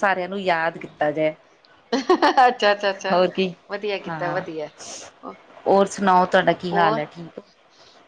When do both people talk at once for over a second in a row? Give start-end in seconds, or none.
none